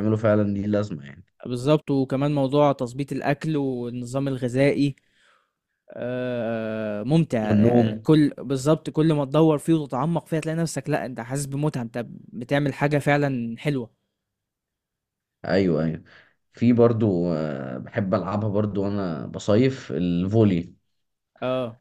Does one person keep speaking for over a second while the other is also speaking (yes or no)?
no